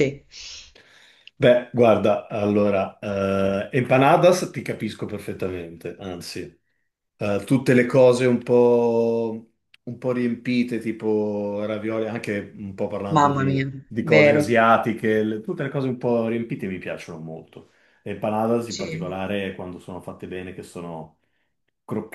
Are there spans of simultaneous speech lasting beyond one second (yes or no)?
yes